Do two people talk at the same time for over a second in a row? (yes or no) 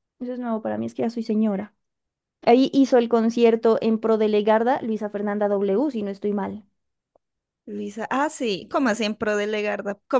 no